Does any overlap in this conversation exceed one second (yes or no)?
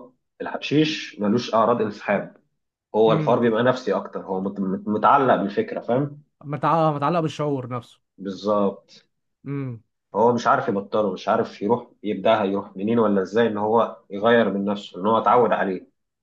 no